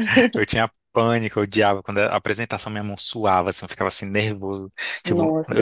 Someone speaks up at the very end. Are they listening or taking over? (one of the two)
listening